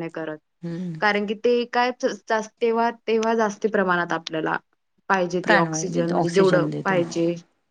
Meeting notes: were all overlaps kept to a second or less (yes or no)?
no